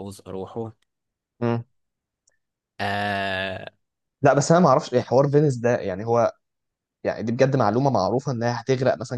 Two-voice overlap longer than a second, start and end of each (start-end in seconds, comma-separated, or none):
none